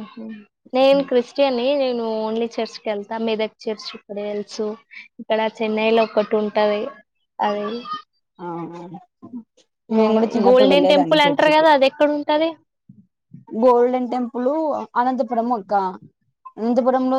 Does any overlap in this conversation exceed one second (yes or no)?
yes